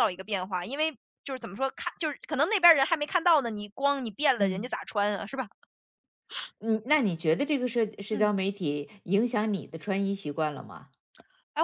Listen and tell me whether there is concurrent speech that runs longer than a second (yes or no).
no